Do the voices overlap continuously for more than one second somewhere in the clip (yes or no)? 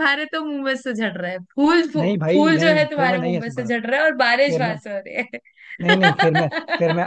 yes